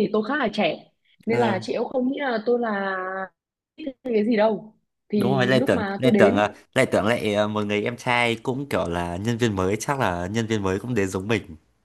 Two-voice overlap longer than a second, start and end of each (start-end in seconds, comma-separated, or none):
5.2-6.5